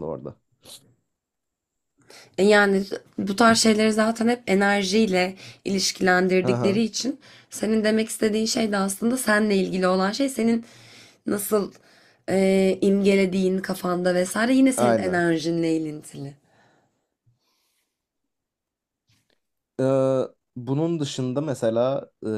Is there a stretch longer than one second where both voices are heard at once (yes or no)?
no